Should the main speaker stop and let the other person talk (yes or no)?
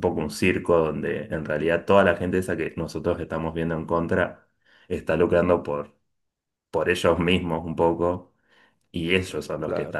no